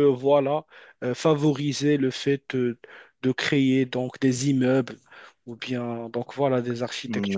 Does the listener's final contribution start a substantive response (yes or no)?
yes